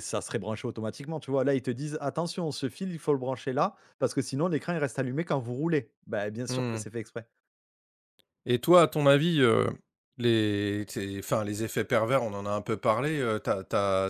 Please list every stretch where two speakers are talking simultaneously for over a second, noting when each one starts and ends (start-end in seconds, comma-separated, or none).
none